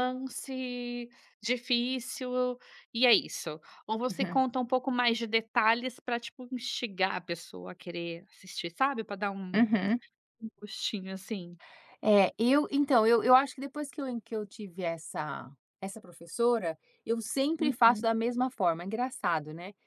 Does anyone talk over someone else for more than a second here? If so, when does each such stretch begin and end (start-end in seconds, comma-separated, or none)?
none